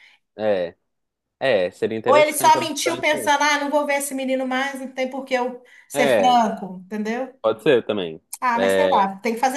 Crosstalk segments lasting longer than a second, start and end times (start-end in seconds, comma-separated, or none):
2.0-3.4